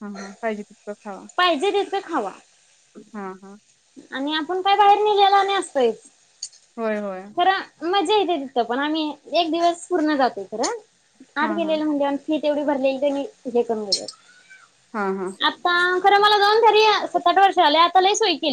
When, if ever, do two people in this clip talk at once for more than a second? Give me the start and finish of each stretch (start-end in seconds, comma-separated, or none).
none